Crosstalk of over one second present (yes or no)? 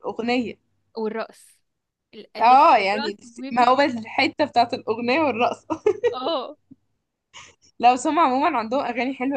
yes